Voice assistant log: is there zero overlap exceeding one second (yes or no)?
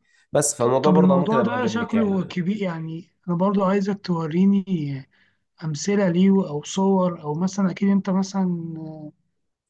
no